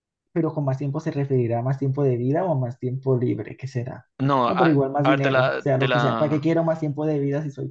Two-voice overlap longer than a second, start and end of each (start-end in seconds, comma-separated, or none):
4.5-6.5